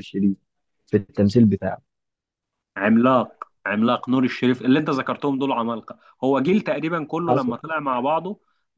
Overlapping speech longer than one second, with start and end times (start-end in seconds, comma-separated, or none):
none